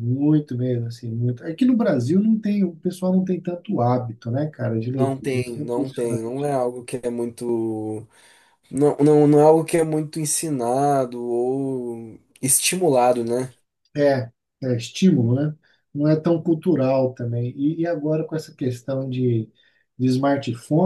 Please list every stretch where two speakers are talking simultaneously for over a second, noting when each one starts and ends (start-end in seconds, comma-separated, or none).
5.0-6.5